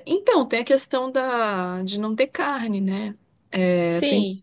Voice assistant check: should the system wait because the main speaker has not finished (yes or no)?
yes